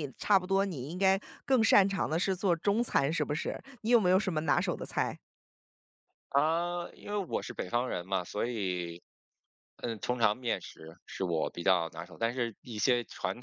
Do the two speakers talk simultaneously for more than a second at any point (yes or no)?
no